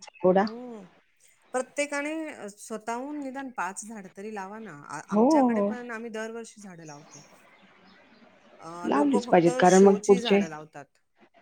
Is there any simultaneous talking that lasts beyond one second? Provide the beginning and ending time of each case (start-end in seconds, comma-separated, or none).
8.9-10.4